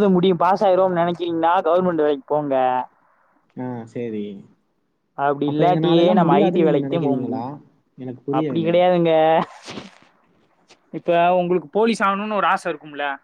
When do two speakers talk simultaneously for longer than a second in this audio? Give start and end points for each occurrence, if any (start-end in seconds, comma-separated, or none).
none